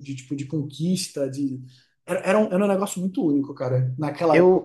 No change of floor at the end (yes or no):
no